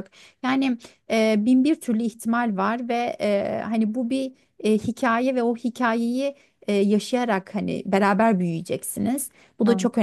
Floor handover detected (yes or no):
no